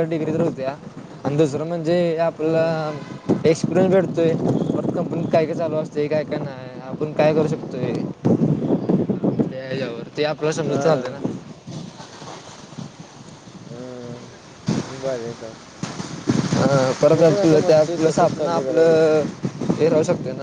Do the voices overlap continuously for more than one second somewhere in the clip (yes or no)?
yes